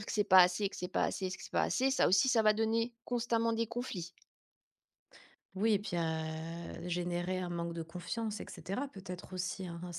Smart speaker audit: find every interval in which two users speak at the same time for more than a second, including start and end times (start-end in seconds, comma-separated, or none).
none